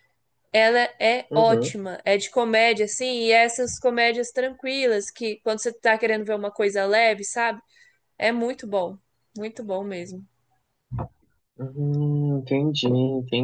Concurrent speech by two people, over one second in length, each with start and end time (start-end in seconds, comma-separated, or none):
none